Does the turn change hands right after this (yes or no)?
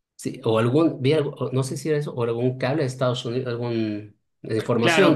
yes